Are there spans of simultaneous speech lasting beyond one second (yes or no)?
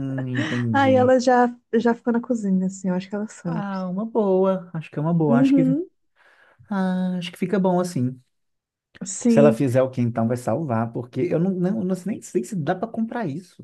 no